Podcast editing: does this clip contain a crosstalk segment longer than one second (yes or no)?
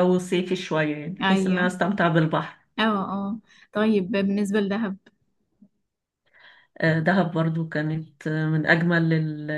no